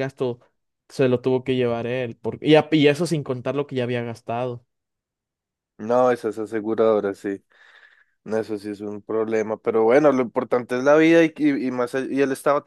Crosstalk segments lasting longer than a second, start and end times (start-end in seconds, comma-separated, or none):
none